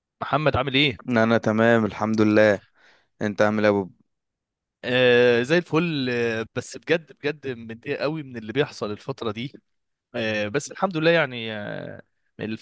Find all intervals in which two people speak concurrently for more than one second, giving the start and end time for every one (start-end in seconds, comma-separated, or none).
none